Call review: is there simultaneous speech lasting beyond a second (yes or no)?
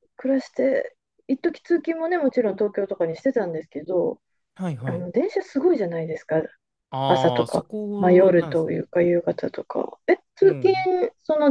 yes